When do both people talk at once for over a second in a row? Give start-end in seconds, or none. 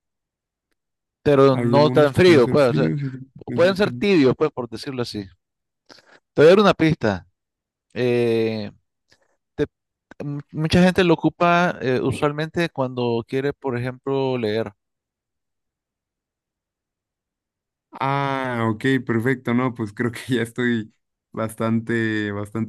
1.5-2.9